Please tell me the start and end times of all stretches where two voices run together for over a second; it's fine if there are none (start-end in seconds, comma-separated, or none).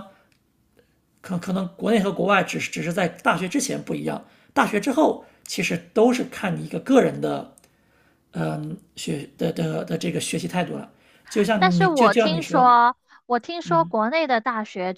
11.6-12.8